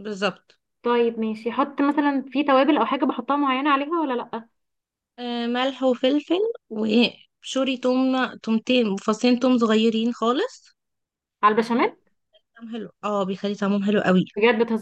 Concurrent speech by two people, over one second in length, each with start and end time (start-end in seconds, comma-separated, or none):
none